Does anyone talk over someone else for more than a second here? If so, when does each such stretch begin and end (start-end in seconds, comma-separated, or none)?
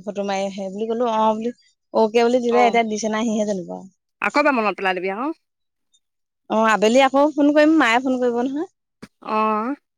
none